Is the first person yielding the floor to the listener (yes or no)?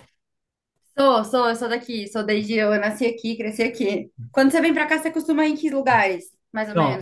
yes